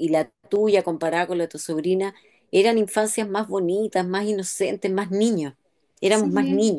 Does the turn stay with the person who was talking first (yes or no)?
no